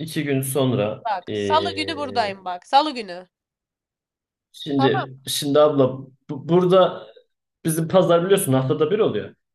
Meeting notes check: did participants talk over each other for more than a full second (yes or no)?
yes